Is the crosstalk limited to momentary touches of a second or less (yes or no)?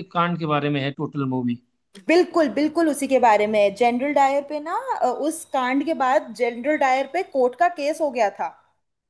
yes